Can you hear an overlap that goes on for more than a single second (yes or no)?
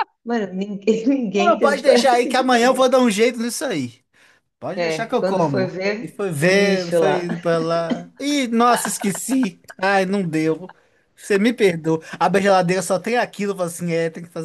yes